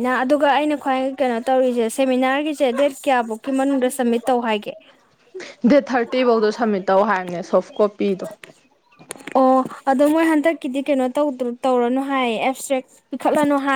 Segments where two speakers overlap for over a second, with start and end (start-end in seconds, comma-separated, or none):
none